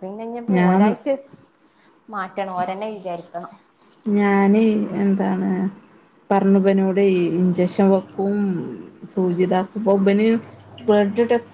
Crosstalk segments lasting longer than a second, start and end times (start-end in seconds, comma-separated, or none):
none